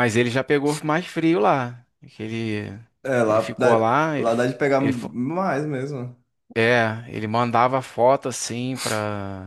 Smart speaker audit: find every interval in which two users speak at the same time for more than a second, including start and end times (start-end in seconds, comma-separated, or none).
3.2-5.1